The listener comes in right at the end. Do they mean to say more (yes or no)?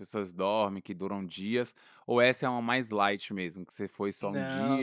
yes